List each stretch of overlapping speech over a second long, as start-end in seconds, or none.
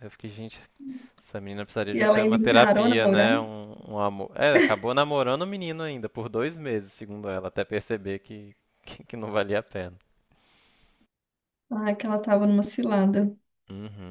1.9-3.3